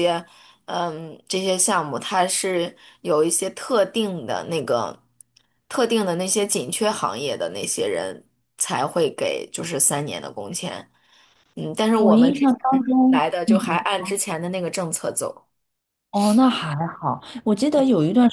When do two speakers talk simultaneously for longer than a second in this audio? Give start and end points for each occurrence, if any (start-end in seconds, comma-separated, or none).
12.0-13.8